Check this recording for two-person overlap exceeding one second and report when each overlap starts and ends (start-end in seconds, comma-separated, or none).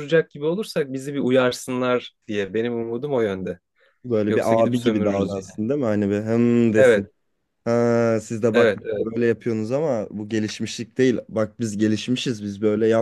4.3-5.6